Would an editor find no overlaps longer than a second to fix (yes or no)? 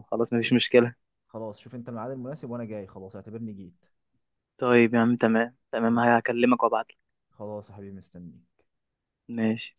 yes